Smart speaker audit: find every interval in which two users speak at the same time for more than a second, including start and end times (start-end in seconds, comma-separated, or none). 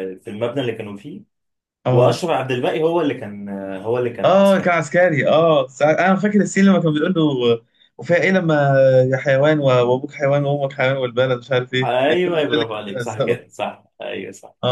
11.8-13.4